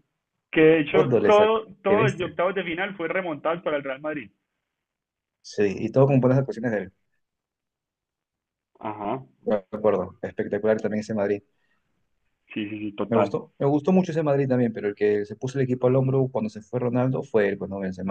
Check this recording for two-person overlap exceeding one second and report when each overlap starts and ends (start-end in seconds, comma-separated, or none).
0.9-2.4